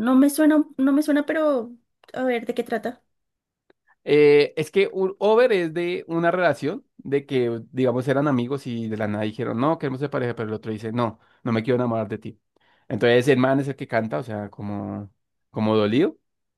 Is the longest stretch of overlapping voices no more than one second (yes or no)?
yes